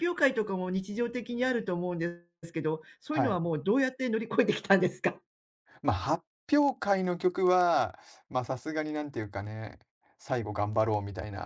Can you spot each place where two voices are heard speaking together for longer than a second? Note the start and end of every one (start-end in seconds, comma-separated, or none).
none